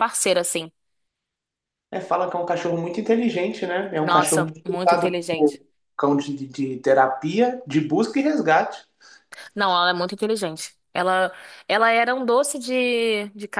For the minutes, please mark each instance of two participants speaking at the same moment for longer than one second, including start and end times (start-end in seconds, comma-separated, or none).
4.0-5.6